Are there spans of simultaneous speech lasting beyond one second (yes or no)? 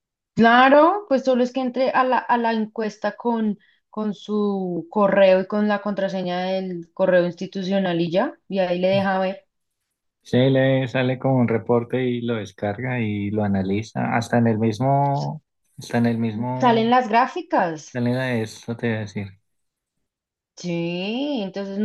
no